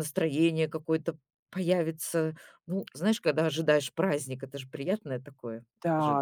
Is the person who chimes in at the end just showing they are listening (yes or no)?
no